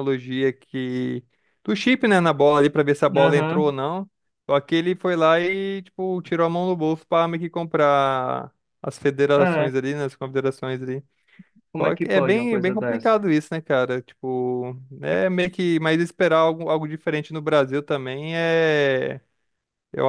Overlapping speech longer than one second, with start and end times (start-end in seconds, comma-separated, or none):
11.8-13.2